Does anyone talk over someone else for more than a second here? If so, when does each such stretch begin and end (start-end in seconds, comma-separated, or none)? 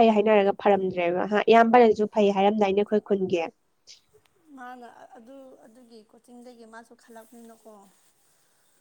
none